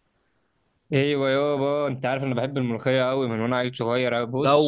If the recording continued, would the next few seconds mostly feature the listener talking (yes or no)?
yes